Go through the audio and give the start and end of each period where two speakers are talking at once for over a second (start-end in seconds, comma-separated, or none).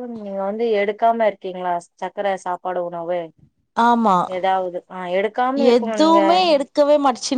none